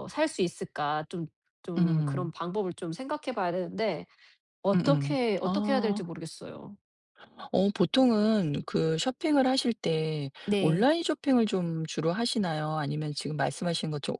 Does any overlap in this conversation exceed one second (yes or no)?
yes